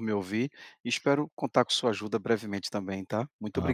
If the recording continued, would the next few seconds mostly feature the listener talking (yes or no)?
yes